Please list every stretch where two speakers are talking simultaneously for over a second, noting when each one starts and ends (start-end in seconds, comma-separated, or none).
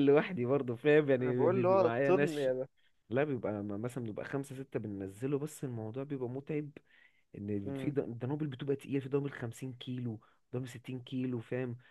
1.2-2.5